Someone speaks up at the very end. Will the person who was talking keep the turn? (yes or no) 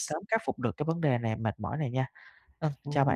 no